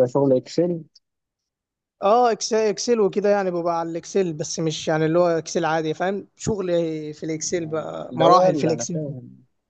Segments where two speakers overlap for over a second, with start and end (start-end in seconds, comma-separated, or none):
7.6-9.0